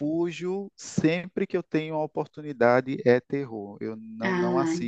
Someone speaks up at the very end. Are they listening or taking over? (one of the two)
listening